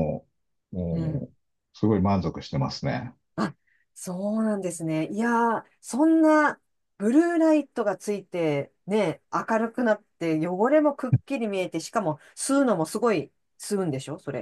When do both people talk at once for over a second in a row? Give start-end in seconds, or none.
none